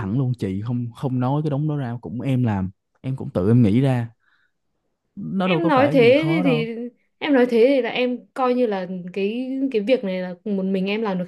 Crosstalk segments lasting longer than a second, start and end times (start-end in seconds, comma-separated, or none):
5.4-6.7